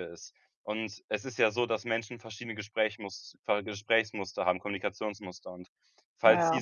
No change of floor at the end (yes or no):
yes